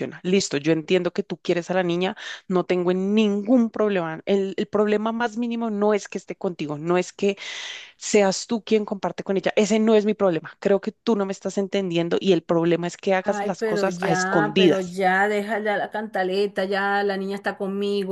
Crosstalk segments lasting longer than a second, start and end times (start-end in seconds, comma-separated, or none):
13.2-15.0